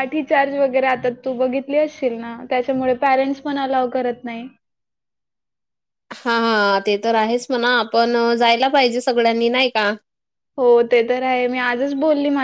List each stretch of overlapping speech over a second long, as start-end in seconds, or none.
none